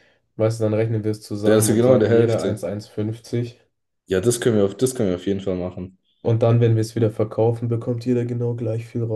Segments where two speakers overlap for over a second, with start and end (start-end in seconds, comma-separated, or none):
1.4-2.6